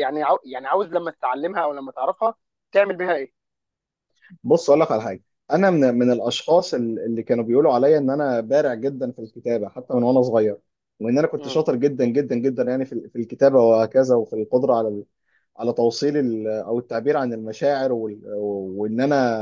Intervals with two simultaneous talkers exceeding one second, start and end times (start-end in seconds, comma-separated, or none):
none